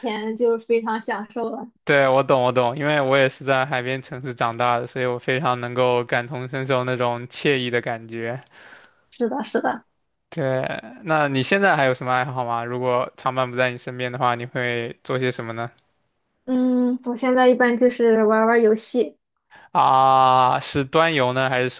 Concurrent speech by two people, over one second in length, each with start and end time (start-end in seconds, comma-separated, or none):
none